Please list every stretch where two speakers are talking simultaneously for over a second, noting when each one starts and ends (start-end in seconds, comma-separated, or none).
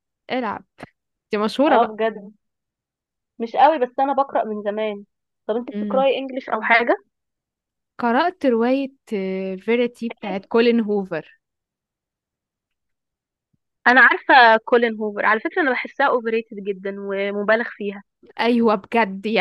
none